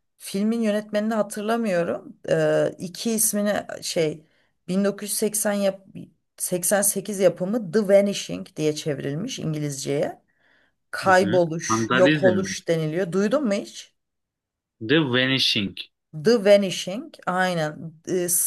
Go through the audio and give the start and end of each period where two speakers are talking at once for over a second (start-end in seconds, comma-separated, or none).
11.0-12.5